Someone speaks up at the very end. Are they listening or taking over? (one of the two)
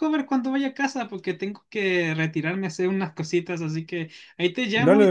listening